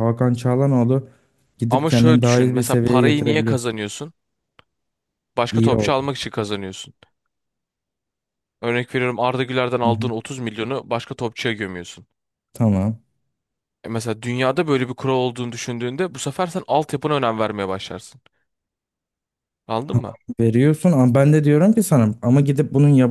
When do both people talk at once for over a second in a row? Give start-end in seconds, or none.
1.7-3.6